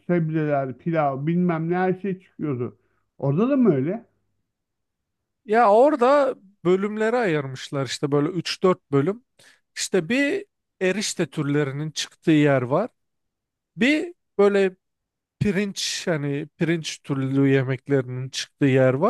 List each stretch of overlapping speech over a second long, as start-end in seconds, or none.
none